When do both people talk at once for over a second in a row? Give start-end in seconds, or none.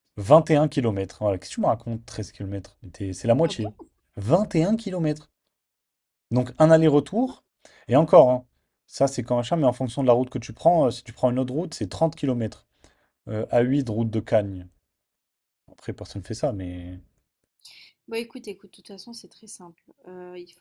none